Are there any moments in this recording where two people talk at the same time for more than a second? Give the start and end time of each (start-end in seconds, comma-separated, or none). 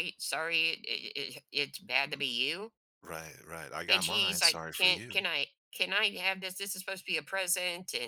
3.9-5.3